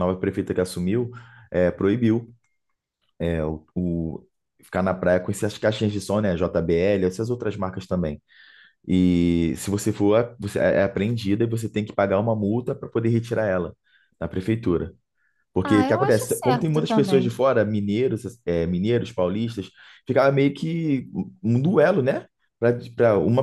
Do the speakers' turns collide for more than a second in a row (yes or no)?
yes